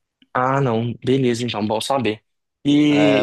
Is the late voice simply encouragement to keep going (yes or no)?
yes